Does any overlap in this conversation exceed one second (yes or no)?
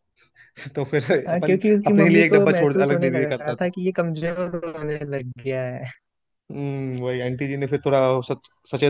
yes